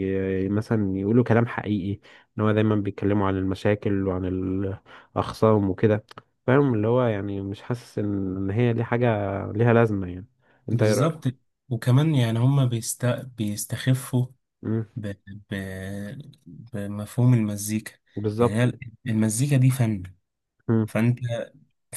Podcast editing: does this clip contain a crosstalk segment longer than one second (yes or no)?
no